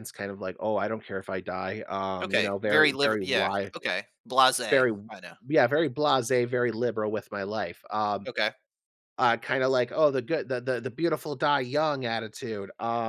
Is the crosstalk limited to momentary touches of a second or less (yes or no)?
no